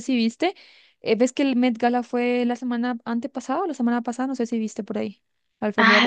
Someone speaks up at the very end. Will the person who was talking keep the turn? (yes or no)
no